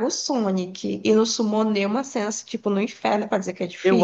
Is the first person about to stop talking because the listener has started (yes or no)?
yes